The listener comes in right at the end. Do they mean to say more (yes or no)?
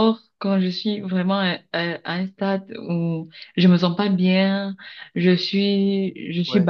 no